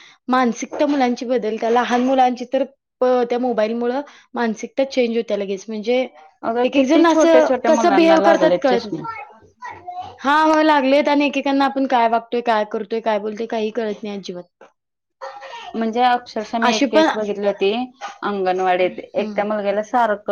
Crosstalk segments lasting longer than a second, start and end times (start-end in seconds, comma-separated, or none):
6.6-9.0